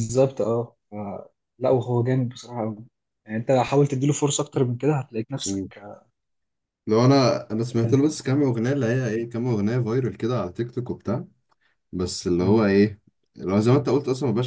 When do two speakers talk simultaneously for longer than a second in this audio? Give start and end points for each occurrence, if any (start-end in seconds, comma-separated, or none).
none